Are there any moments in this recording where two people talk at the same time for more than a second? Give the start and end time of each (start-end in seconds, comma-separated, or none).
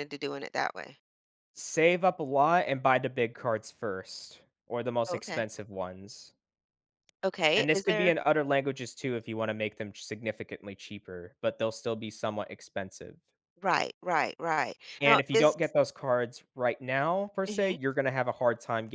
none